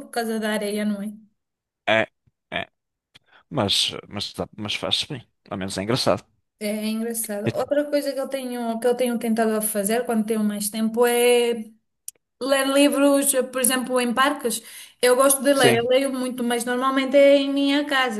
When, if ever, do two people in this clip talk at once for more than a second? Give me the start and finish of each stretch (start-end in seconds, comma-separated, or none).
none